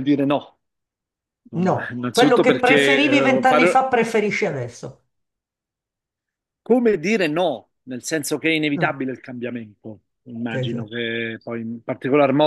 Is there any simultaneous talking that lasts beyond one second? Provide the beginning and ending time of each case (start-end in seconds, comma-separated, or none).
1.5-3.9